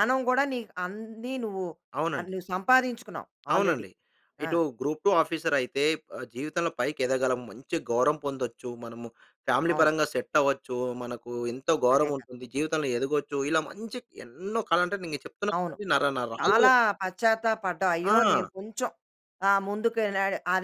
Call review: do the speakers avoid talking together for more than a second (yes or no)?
yes